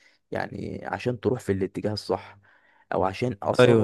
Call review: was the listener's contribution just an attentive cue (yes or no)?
yes